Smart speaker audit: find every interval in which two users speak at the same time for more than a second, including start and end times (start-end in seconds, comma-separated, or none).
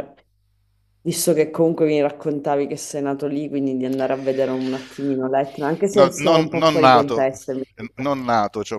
5.9-7.3